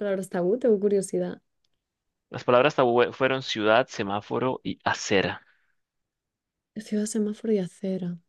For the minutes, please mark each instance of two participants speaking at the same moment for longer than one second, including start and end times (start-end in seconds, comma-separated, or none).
none